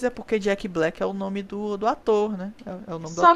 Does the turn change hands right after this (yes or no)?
yes